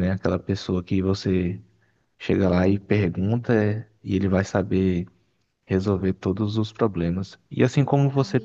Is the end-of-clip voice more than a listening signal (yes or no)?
no